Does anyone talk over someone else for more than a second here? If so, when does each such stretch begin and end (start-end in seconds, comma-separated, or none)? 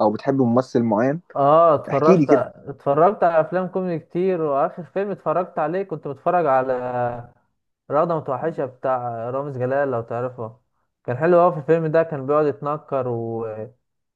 none